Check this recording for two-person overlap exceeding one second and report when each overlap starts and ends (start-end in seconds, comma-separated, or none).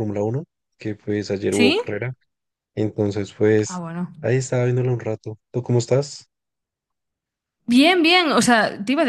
none